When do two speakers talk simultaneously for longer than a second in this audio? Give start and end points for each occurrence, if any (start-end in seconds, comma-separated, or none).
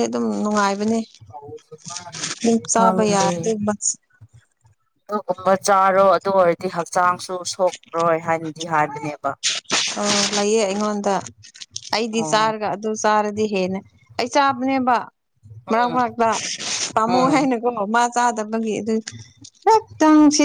none